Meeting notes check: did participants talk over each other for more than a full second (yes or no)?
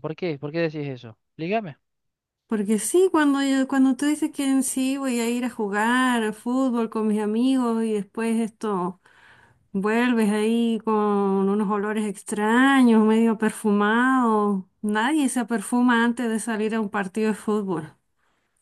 no